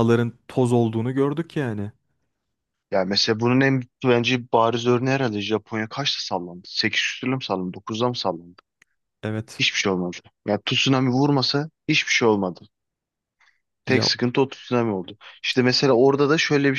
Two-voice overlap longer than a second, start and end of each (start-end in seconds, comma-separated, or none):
none